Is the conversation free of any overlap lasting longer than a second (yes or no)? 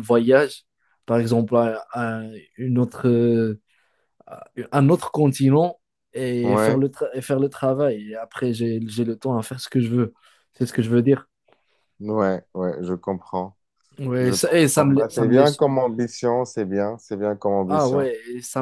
no